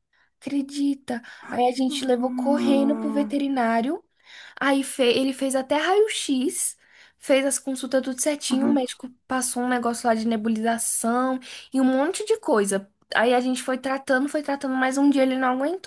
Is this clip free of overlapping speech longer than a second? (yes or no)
no